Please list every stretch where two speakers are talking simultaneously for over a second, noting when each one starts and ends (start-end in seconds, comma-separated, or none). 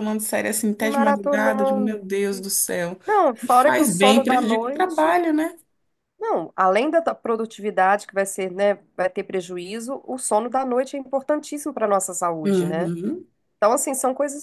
0.8-2.1, 3.4-5.2